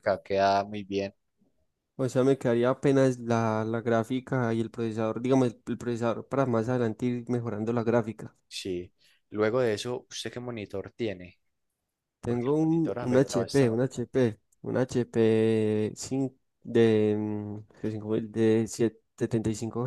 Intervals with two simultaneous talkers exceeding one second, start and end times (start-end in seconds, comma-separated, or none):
12.2-13.8